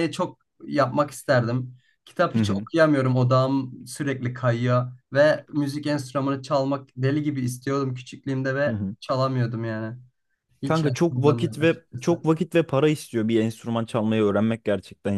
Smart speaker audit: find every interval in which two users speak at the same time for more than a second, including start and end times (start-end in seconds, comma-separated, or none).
10.6-12.3